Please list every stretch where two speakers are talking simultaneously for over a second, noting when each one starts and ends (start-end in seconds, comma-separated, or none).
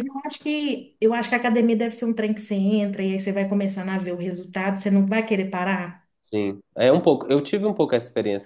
none